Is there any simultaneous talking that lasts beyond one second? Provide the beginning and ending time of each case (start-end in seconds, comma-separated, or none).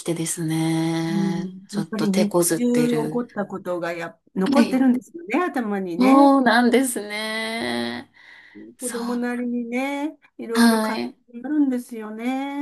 1.1-3.3